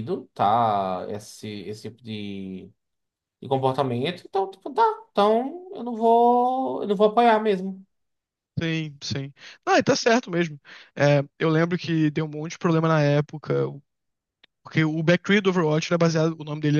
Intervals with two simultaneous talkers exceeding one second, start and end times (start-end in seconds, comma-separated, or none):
none